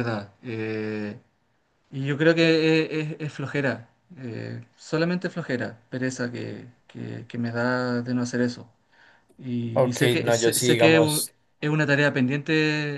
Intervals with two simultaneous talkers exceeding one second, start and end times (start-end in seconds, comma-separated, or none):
9.7-11.2